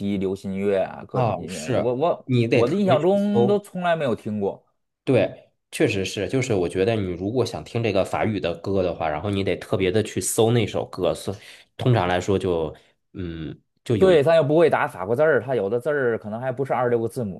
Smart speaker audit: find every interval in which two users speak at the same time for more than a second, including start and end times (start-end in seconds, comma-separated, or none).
1.1-3.6